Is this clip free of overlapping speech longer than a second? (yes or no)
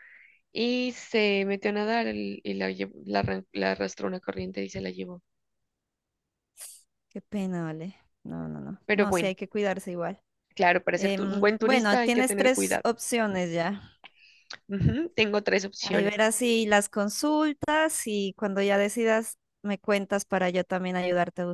no